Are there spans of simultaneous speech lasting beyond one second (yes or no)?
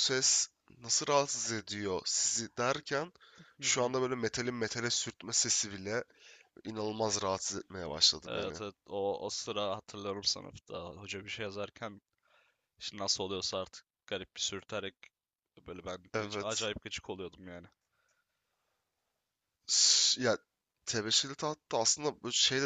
no